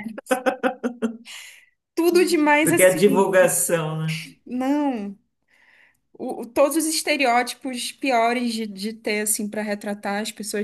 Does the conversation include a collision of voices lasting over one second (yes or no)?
no